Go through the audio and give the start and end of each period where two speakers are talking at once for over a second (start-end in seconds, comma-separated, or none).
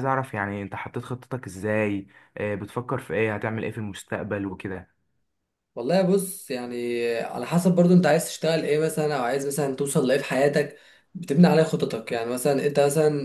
none